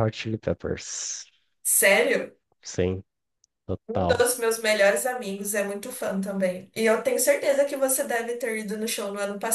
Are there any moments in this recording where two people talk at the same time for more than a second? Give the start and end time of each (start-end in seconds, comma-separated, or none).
none